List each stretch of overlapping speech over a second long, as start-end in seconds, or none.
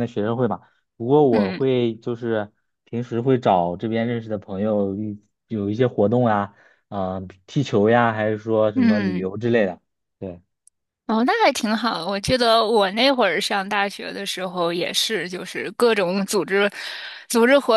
none